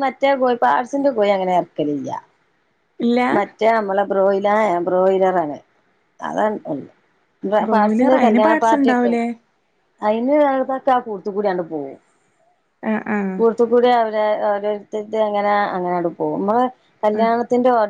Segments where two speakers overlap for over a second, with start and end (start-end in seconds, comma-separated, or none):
7.7-9.1